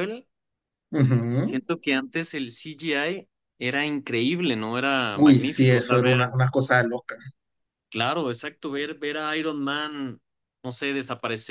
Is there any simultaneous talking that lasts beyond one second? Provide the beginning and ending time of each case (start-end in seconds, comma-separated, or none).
5.1-6.3